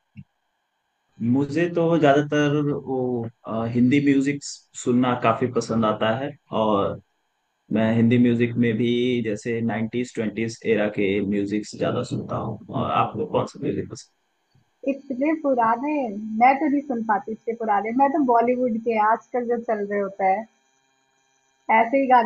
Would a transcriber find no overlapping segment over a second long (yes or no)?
yes